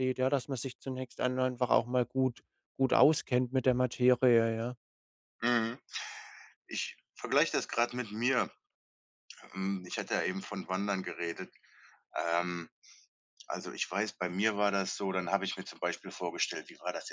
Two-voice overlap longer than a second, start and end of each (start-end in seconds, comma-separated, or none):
none